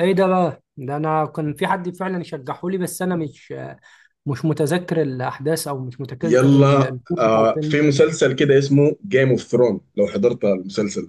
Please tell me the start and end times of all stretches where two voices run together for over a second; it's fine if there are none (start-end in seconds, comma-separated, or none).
6.2-7.9